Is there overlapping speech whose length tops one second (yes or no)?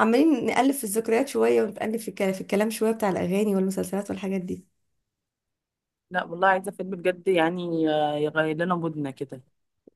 no